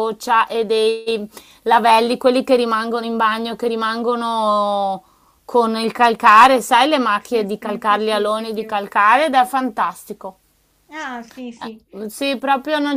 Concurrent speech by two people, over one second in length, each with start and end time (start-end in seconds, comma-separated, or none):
7.2-8.8